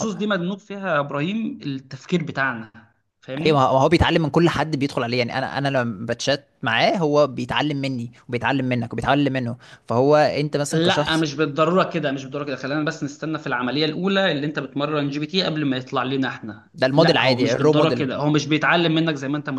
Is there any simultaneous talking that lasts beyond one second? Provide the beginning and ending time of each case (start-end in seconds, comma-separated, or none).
16.7-18.1